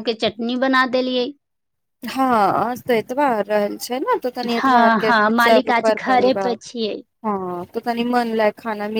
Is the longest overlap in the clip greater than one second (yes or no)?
yes